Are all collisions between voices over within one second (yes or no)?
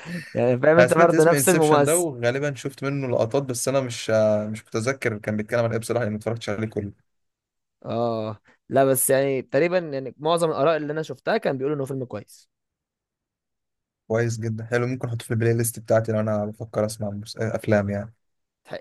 no